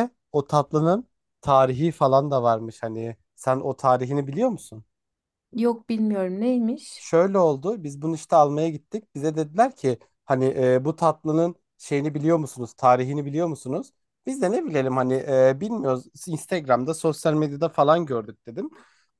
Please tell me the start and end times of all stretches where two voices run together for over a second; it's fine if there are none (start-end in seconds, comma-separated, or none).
none